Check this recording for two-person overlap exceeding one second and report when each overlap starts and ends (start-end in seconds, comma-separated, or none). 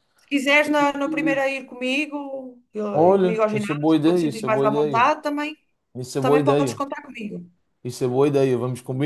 2.9-5.1